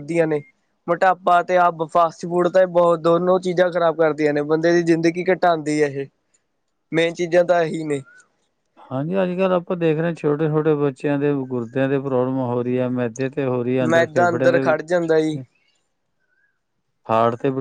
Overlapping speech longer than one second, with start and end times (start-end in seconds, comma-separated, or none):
13.9-15.4